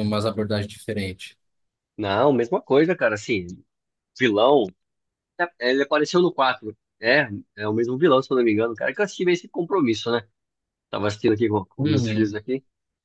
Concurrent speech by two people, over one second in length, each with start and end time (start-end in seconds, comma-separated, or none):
none